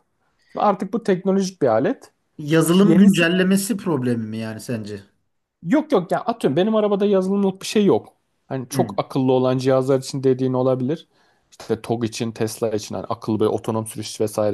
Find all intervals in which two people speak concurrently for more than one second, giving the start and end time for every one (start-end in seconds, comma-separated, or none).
none